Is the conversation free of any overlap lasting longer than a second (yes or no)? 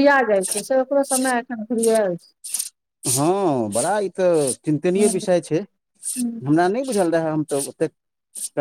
yes